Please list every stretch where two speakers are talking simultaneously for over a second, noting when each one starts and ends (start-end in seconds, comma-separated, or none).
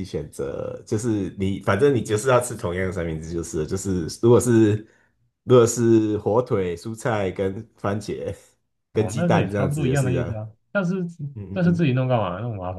8.9-10.4